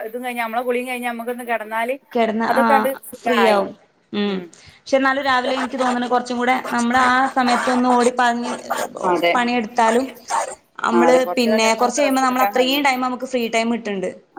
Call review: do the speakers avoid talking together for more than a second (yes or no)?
no